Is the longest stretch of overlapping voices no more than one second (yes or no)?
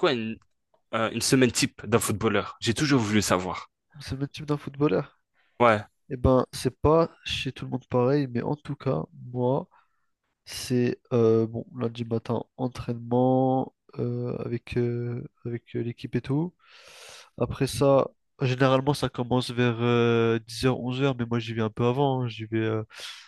yes